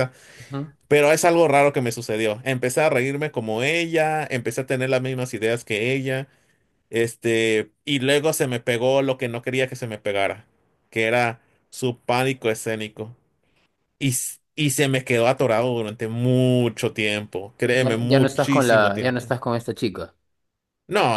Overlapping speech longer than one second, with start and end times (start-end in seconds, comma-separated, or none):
17.8-19.2